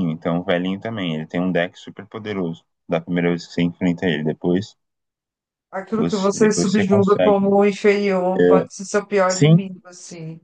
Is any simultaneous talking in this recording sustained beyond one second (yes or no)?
yes